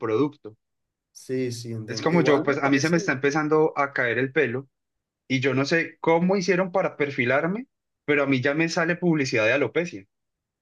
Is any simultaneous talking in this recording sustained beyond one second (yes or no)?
yes